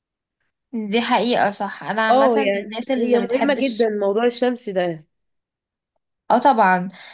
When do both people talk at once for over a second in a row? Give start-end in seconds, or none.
2.1-3.9